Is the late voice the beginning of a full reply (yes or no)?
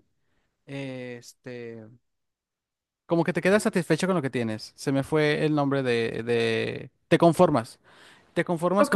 no